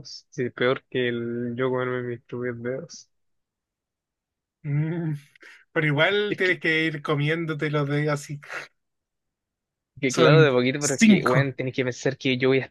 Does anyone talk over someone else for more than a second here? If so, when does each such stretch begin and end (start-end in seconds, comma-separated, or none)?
10.2-11.5